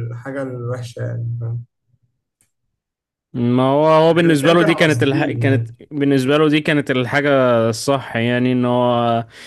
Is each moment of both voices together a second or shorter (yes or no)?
no